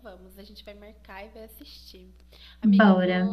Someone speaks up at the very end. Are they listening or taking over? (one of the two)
listening